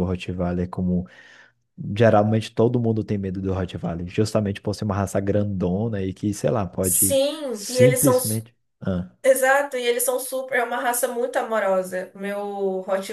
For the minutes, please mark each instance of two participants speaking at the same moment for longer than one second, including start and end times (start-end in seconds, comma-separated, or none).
6.8-8.2